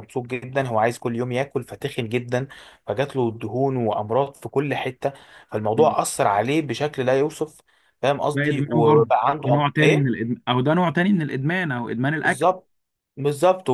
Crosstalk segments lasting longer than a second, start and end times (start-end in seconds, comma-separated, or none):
8.3-10.2